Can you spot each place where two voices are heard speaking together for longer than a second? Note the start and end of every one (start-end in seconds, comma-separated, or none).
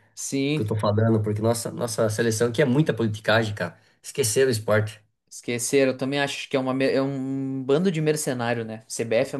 none